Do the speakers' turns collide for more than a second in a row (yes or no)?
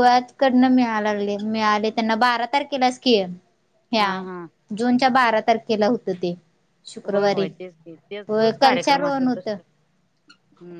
yes